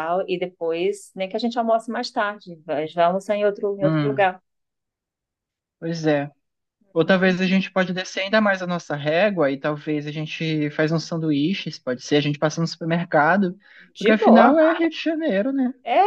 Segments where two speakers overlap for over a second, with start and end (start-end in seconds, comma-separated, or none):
none